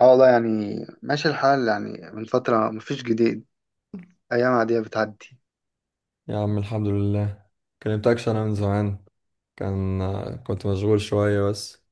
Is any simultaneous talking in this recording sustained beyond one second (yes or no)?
no